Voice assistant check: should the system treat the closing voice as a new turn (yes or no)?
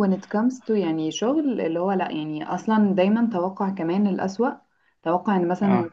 no